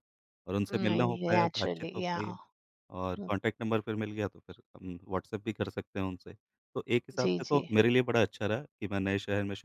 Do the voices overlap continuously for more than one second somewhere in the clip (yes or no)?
yes